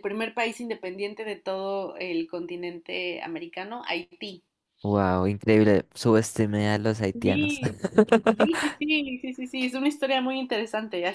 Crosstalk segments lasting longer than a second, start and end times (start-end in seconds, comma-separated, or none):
none